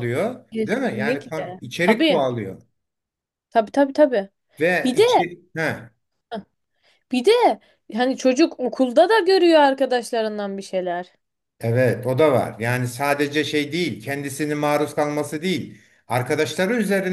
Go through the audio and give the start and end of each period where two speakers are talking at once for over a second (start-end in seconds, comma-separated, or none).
0.5-2.3